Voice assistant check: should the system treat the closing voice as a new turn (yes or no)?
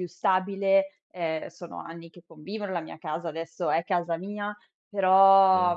yes